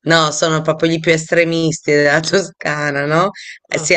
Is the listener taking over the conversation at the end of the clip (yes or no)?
no